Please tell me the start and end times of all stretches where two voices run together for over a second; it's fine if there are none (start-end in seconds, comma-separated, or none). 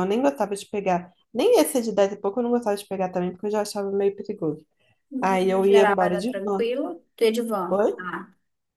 5.2-6.7